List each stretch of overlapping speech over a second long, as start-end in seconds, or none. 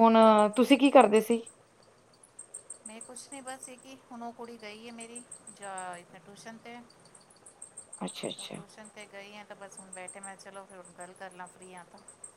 none